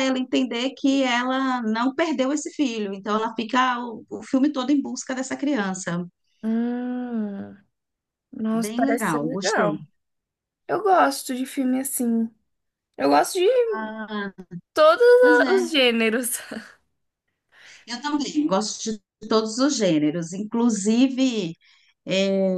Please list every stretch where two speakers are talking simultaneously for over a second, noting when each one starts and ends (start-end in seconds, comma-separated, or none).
8.5-9.8